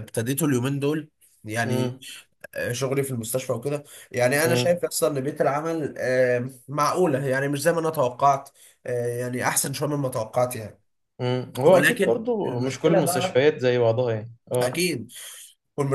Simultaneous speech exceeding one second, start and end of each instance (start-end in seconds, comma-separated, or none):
11.7-13.4